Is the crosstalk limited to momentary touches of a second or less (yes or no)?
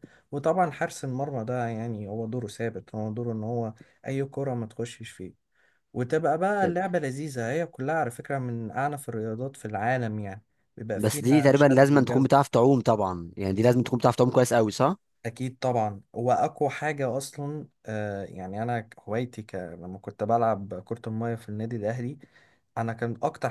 no